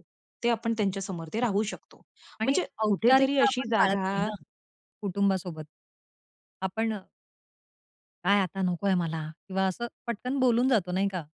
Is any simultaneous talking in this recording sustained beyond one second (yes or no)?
yes